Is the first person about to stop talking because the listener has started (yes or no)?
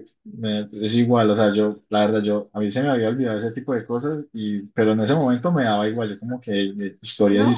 yes